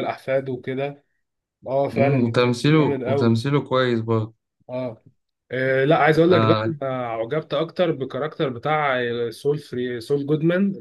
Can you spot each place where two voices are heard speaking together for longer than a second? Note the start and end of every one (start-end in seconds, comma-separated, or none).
1.9-3.4